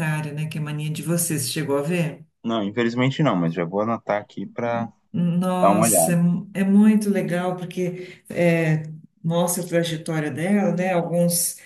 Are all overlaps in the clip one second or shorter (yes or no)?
yes